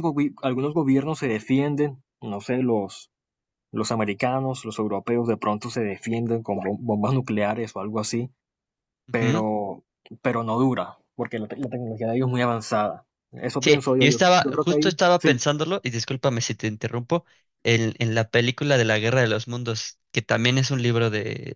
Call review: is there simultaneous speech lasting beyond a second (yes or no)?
yes